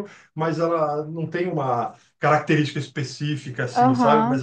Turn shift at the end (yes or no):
yes